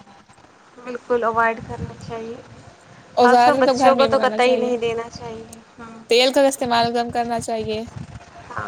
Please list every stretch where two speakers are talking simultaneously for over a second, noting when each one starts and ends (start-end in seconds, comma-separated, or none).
3.2-4.7